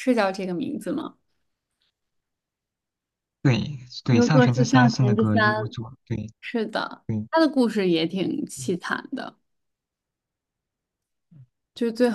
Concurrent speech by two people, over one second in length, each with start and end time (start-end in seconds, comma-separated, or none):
4.1-5.8